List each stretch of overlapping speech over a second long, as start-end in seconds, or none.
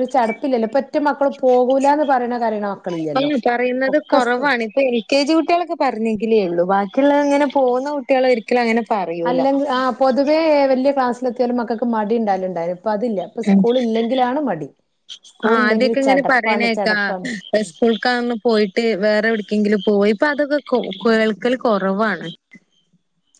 15.5-16.9